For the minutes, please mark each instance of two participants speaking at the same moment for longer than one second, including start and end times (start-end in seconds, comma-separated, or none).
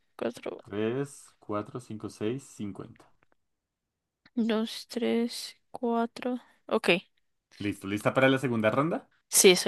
none